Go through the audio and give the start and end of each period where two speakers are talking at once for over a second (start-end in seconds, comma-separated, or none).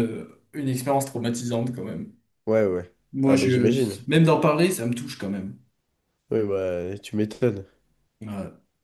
none